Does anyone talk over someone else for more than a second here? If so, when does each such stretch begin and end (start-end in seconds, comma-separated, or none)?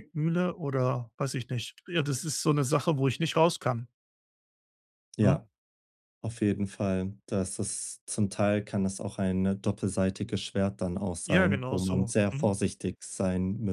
11.2-12.5